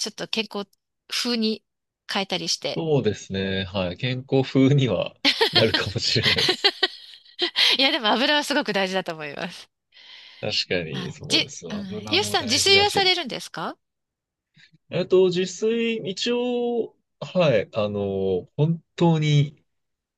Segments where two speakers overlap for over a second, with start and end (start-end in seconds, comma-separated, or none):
10.9-13.1